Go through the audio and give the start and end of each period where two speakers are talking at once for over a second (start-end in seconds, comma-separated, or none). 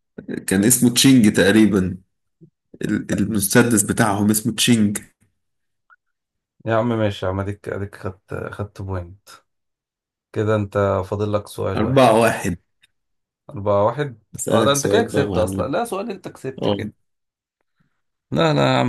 14.3-15.7